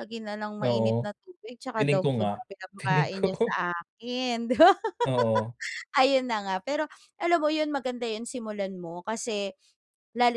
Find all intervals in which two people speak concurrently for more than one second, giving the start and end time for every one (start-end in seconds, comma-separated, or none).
1.8-3.5